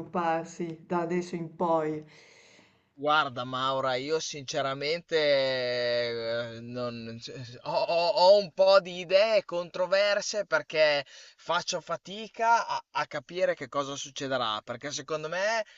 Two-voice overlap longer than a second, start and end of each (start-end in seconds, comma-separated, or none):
none